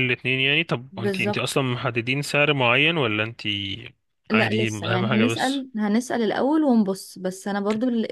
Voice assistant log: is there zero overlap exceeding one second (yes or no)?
no